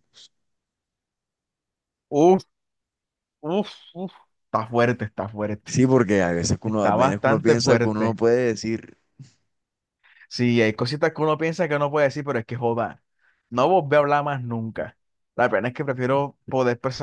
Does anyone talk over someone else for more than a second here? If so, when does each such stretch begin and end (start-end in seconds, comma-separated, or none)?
6.7-8.2